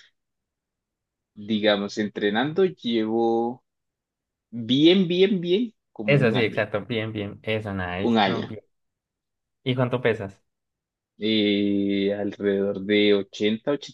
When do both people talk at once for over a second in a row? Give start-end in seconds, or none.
none